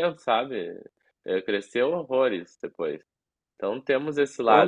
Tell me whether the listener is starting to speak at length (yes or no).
yes